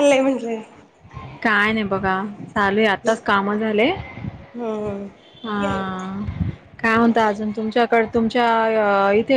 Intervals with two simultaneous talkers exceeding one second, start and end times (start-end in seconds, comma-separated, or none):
none